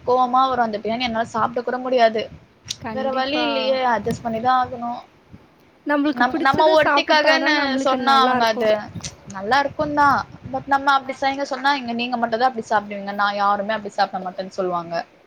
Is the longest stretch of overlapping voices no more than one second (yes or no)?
no